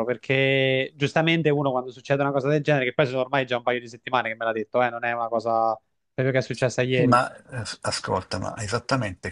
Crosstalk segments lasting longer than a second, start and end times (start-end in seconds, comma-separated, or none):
none